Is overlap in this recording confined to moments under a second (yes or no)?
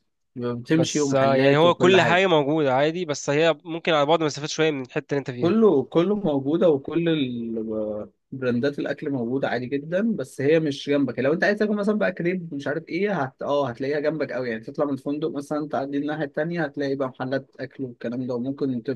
no